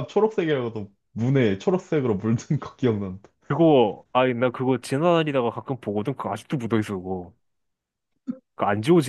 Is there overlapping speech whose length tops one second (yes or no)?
no